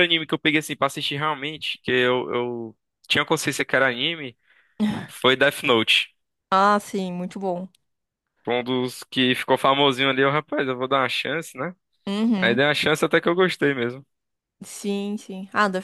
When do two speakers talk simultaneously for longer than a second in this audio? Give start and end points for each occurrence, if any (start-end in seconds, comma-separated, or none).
none